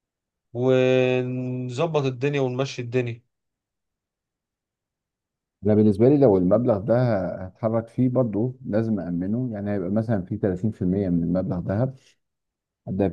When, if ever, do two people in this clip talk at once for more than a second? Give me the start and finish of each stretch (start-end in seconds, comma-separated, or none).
none